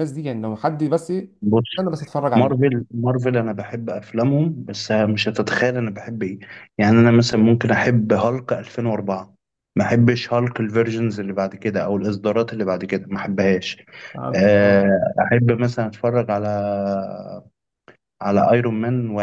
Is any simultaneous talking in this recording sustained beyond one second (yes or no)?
no